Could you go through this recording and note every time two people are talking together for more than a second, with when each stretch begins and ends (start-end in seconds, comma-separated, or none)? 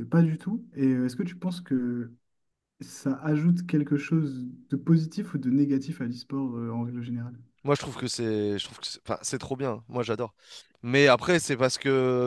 none